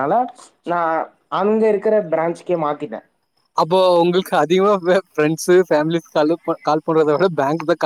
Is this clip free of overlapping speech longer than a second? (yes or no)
yes